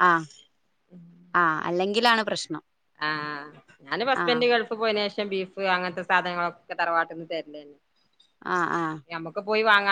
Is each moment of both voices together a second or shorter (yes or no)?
yes